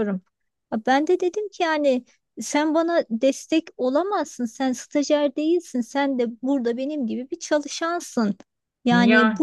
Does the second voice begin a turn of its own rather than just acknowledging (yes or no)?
no